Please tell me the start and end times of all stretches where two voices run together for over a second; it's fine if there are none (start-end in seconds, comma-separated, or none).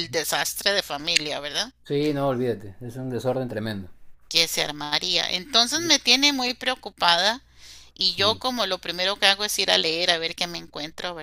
none